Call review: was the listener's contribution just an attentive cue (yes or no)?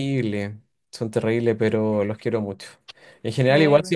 yes